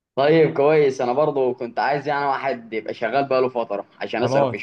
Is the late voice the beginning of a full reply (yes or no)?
yes